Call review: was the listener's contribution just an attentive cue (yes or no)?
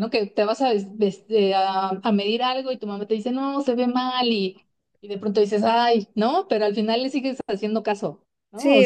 no